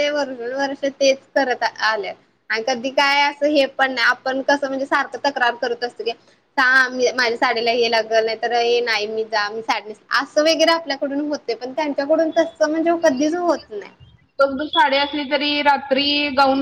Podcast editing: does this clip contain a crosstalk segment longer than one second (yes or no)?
no